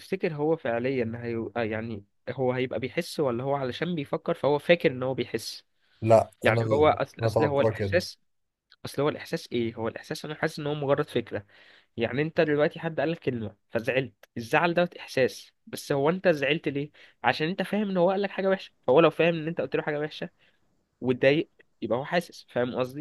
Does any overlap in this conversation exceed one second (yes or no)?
yes